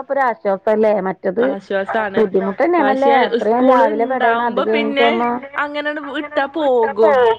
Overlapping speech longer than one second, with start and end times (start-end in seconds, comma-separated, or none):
2.8-5.1